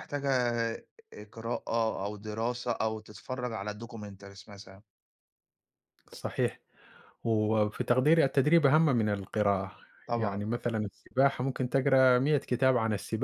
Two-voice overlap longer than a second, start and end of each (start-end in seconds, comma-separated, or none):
none